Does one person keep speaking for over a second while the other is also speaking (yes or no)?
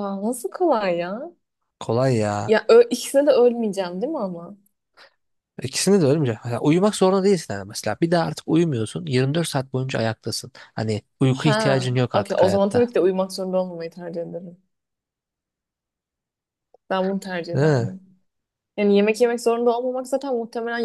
yes